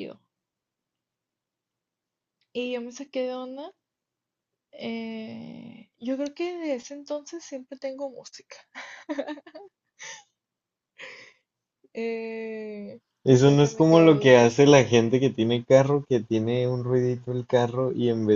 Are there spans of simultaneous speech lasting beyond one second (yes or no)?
yes